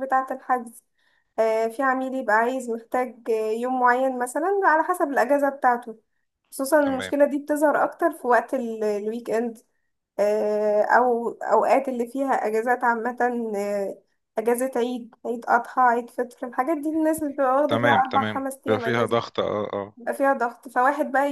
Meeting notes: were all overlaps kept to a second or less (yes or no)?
no